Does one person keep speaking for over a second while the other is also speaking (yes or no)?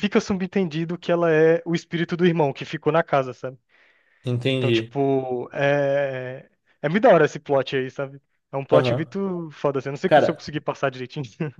no